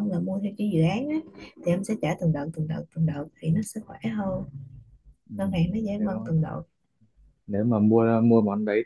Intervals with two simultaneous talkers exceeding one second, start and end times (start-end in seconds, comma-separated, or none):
none